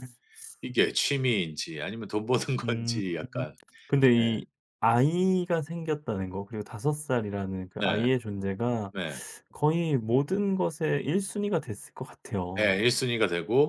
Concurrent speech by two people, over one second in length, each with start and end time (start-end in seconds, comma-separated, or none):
none